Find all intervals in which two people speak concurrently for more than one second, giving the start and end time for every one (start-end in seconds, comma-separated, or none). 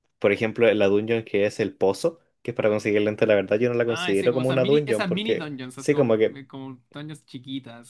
3.8-6.4